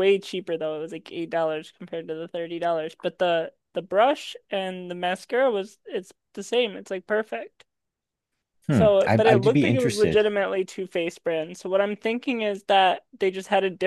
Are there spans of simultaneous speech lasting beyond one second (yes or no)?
yes